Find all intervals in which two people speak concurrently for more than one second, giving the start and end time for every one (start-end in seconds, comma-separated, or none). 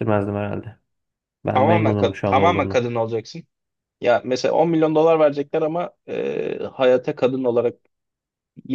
1.5-2.8